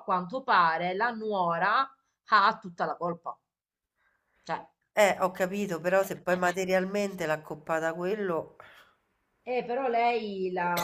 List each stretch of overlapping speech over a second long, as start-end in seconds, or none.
none